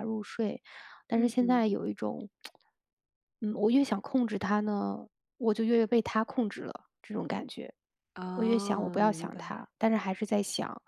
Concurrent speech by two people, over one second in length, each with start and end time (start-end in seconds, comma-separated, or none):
8.3-9.6